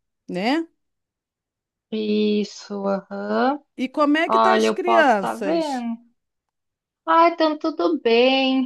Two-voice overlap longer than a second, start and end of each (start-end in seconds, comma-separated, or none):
4.3-5.9